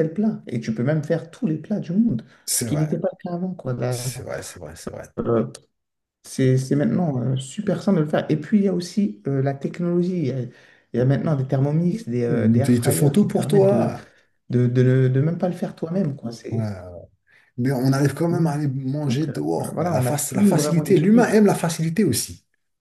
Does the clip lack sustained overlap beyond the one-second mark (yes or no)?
no